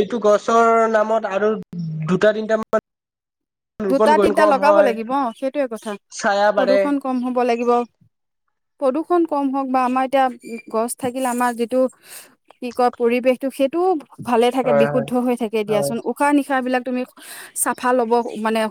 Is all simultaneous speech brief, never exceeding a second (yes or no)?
yes